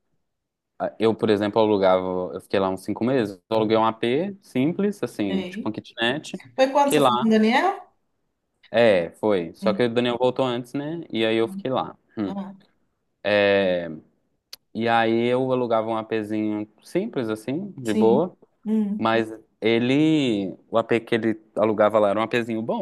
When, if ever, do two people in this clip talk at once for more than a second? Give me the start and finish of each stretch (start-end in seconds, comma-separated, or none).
none